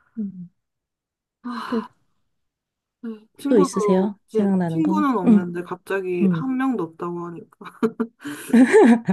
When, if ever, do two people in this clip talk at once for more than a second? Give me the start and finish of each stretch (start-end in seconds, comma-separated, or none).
3.5-5.5